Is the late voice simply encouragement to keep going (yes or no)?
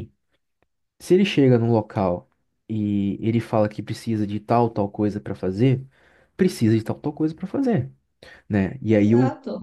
no